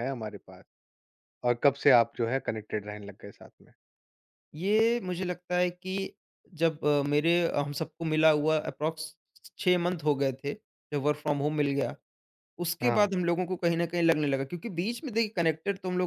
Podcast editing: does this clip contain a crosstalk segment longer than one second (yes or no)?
no